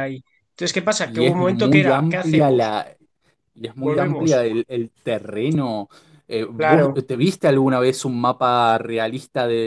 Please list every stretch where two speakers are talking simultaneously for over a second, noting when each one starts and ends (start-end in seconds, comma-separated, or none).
1.0-2.7